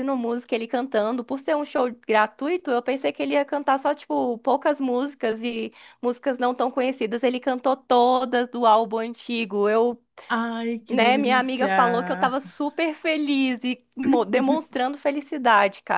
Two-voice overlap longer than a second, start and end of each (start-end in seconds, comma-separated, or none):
10.9-12.3